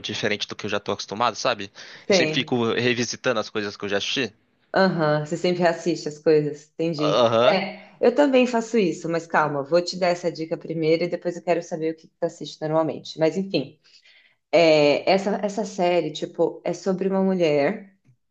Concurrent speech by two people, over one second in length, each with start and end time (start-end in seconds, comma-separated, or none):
none